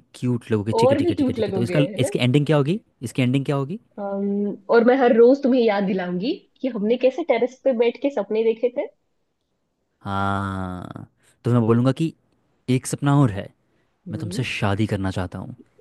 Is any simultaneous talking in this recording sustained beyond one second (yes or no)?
yes